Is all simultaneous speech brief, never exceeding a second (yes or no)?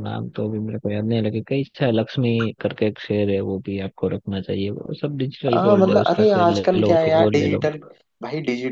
no